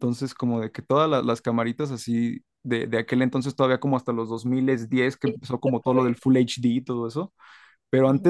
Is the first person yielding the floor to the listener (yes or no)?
no